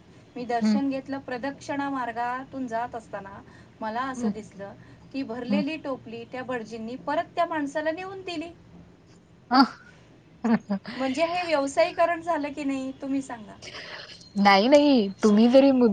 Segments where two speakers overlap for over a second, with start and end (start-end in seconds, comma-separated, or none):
none